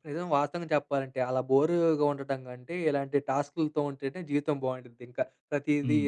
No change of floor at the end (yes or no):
no